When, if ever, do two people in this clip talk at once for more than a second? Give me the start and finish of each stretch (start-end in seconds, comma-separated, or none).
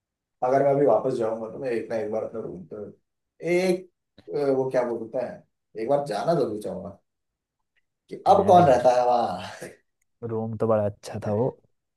none